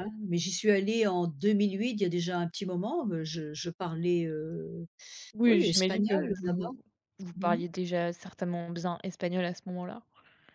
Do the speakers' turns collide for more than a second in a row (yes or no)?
yes